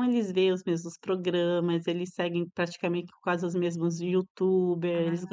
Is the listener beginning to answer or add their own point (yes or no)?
no